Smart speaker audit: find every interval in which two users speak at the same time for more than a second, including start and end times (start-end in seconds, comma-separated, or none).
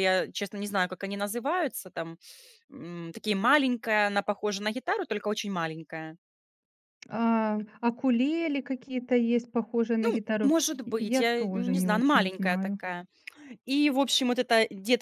10.4-12.8